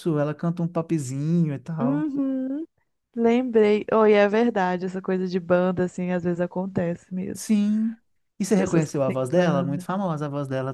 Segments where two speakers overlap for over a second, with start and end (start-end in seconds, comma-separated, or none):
8.6-9.9